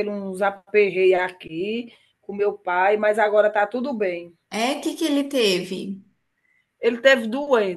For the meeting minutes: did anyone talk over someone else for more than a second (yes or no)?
no